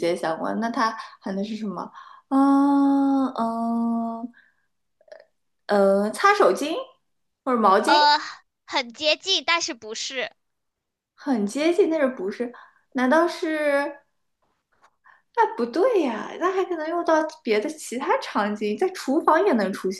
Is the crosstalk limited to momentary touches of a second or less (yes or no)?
yes